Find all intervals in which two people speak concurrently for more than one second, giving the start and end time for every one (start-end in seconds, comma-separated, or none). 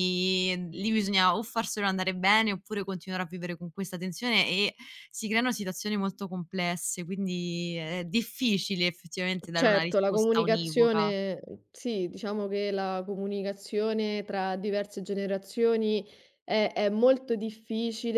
9.5-11.1